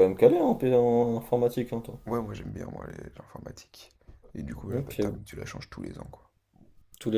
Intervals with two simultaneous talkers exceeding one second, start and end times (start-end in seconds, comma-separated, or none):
none